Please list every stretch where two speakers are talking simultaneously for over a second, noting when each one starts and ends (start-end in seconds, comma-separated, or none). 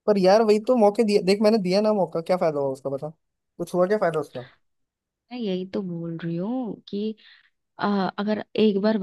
none